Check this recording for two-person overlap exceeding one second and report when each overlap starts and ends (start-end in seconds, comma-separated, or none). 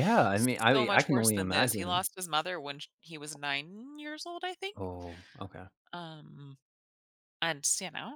0.7-2.1